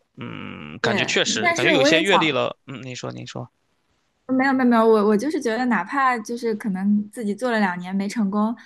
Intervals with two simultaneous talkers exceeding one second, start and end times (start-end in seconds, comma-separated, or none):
0.8-2.4